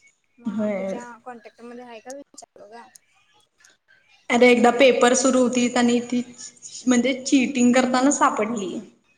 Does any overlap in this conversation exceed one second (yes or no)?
no